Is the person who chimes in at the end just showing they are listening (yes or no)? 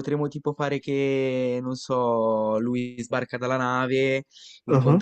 yes